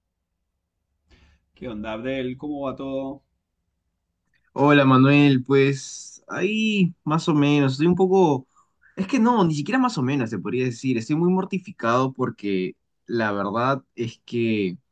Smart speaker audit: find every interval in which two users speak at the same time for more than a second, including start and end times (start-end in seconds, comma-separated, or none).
none